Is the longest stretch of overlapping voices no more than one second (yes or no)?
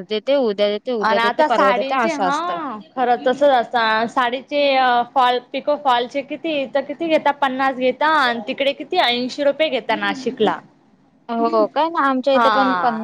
no